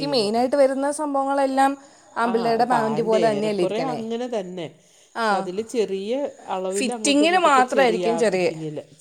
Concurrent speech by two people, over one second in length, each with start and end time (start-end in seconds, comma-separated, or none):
2.3-4.0, 6.8-8.5